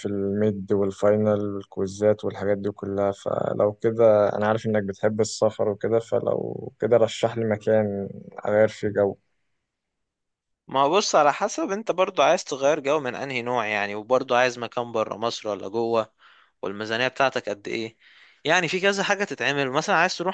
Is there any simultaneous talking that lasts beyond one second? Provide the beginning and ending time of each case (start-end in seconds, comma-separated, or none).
none